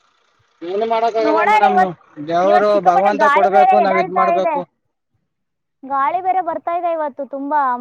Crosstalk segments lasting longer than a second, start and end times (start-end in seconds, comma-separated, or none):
2.5-4.5